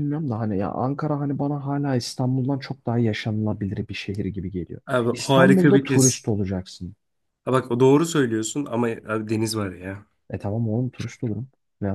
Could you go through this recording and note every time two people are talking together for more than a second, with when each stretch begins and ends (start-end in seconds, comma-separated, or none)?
4.9-6.3